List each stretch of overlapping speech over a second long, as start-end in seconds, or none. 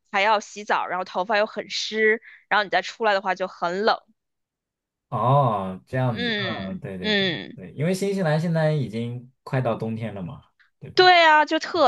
6.1-7.6